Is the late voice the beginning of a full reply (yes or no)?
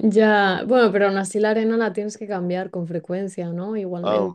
yes